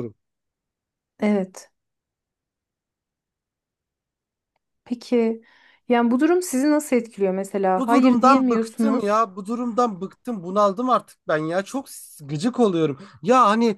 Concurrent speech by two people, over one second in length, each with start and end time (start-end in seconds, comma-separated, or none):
7.8-9.2